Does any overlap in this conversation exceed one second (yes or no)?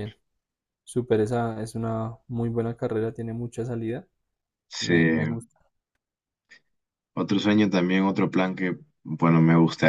no